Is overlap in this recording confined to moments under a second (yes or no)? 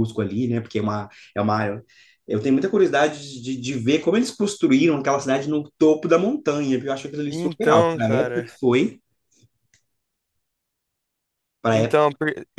no